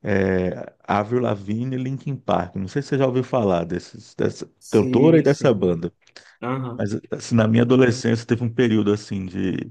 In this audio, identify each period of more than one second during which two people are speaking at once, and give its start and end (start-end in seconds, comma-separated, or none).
4.6-5.8